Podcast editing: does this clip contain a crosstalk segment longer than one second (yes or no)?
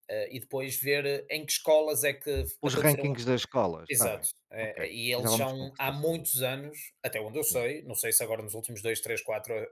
yes